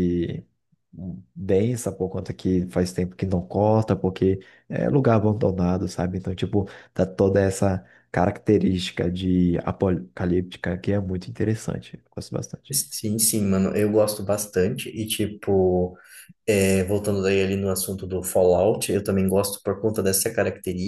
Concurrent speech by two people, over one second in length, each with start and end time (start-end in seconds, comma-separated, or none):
none